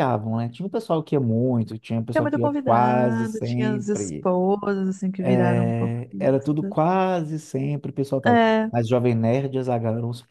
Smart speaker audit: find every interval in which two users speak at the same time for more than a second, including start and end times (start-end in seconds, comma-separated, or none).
2.1-4.3, 5.2-6.7